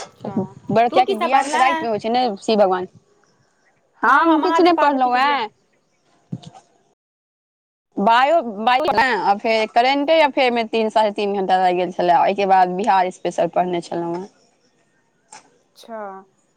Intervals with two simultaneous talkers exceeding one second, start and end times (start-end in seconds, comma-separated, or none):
4.0-5.4